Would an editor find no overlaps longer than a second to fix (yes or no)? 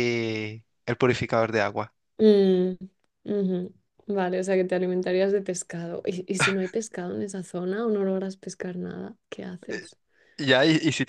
yes